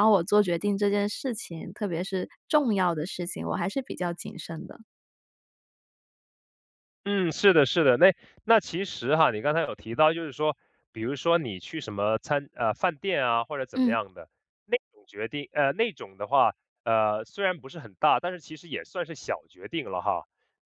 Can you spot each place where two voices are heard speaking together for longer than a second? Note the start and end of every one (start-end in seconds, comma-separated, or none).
none